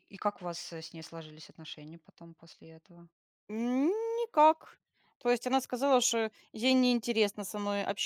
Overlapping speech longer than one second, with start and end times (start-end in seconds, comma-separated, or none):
none